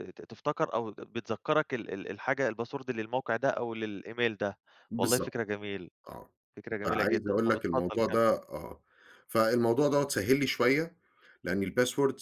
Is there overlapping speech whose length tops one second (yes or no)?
yes